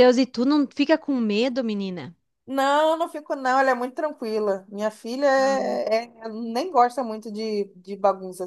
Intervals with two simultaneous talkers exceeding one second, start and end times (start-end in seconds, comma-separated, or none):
none